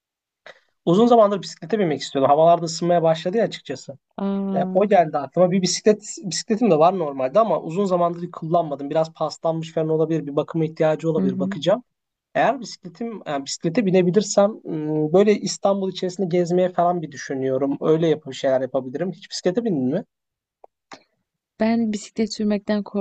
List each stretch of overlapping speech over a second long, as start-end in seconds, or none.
none